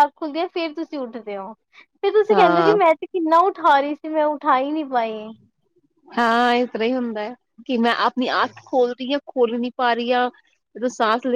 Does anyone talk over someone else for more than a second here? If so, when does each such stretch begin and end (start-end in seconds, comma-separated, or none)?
none